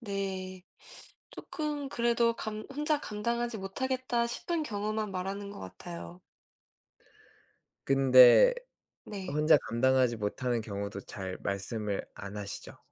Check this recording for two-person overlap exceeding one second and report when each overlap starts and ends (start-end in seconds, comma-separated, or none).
none